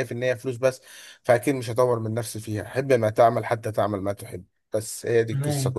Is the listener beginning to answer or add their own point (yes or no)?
yes